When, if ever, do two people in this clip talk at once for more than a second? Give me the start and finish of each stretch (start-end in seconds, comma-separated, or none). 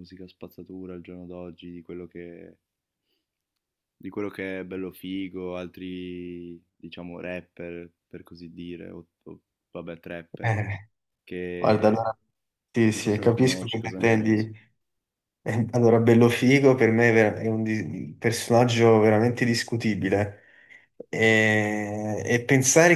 12.9-14.5